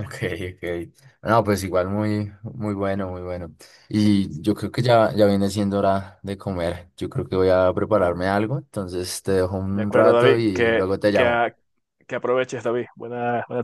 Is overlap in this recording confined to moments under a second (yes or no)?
no